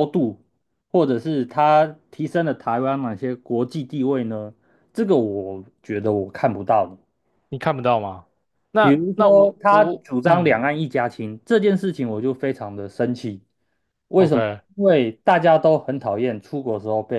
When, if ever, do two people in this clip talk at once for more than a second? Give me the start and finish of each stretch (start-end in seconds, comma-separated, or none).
8.8-10.6